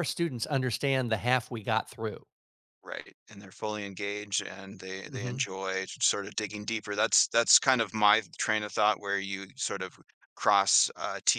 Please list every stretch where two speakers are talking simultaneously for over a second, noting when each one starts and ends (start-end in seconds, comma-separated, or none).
none